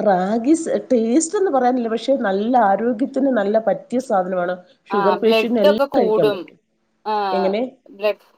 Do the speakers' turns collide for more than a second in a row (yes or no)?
yes